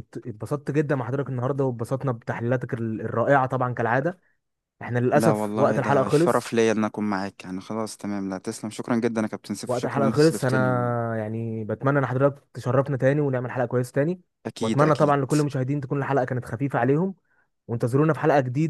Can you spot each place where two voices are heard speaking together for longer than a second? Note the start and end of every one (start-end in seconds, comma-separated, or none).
5.1-6.5, 9.7-10.9